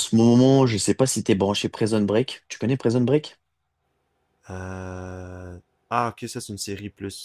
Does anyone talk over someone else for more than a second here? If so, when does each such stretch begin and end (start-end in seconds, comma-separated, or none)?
none